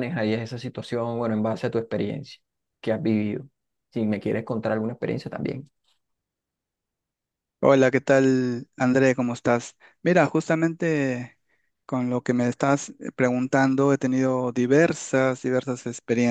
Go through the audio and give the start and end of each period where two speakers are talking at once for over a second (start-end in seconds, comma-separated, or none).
none